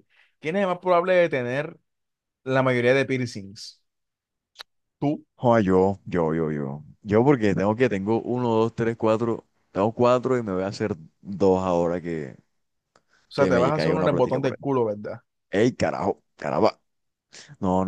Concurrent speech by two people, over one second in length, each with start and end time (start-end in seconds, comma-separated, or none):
13.3-14.7